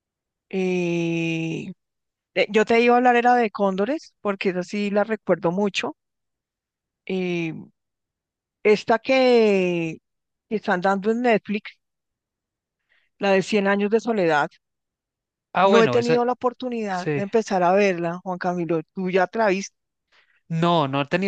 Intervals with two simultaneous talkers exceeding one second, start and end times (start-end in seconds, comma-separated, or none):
none